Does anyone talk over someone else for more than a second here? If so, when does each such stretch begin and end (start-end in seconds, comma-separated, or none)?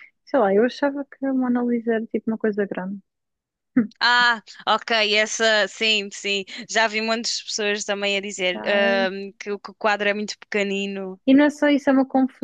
none